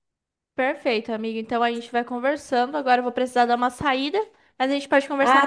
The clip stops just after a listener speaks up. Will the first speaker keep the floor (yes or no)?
no